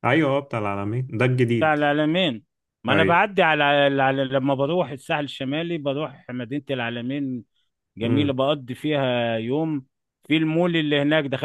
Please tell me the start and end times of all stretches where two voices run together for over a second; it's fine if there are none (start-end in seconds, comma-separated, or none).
none